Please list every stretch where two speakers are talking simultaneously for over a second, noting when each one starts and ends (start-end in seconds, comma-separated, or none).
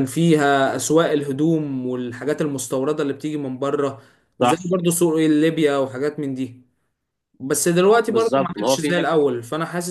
8.1-9.3